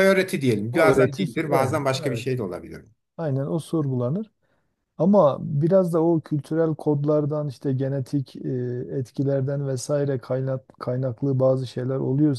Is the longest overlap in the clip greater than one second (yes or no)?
yes